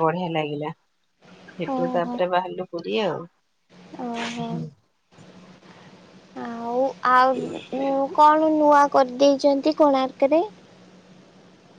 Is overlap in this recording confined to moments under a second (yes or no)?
yes